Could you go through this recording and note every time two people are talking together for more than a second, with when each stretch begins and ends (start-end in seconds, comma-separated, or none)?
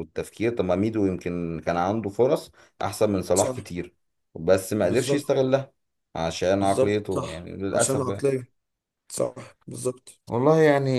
6.6-8.3